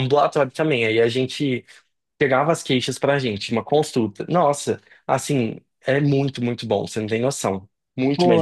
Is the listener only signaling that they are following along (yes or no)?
no